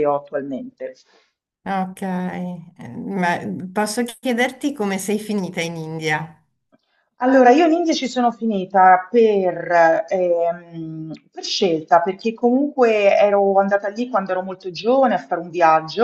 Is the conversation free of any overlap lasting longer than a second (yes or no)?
yes